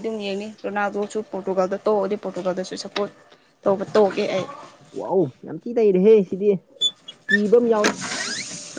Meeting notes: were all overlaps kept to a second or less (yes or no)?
yes